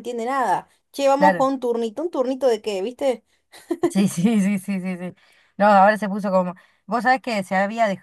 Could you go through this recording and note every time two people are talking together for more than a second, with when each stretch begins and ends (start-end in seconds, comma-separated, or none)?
none